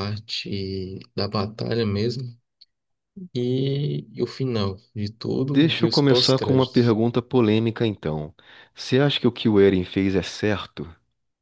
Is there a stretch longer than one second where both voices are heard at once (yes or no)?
yes